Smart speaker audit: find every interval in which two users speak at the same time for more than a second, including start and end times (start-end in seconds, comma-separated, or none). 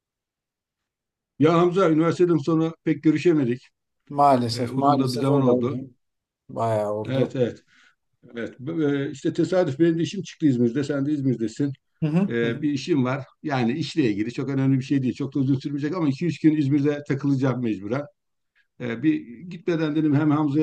4.5-5.8